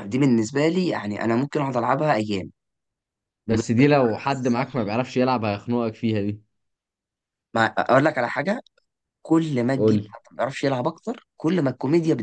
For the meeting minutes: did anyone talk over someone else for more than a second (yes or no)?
yes